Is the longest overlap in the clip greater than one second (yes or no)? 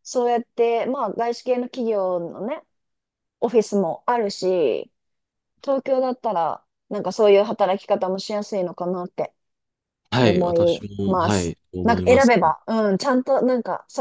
yes